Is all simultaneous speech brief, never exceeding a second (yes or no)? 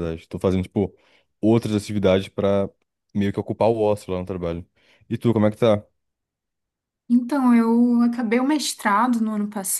yes